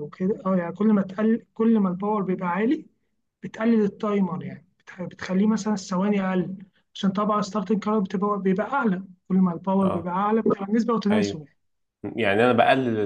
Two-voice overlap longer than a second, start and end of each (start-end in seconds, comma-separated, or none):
none